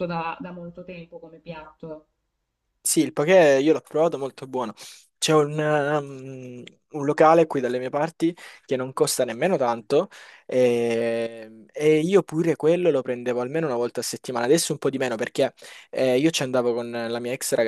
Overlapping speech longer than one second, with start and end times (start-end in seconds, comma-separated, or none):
none